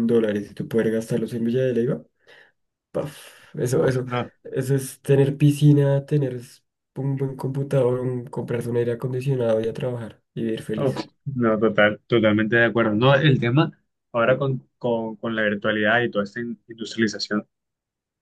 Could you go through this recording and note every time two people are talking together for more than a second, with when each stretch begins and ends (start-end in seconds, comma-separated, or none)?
none